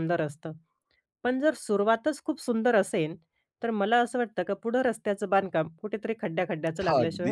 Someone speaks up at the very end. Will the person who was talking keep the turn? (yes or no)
no